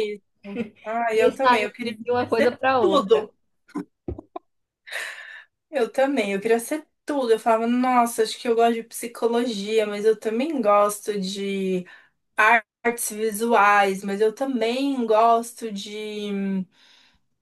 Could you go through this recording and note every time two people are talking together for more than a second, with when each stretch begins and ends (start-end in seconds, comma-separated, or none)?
1.1-3.3